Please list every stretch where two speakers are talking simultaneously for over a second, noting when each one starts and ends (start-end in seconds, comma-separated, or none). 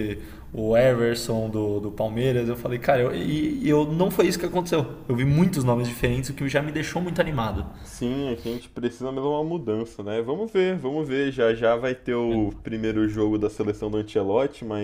none